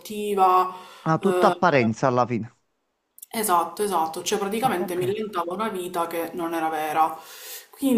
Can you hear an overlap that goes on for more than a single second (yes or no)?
no